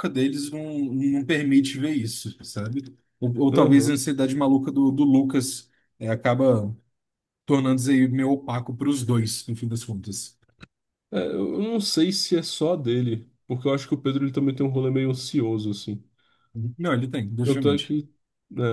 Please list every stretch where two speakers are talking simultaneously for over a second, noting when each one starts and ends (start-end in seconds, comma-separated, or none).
none